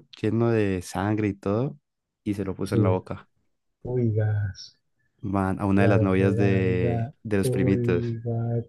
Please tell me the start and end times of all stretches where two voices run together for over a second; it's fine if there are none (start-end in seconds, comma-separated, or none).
5.8-7.8